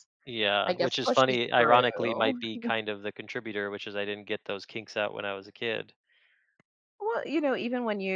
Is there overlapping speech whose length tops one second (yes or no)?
yes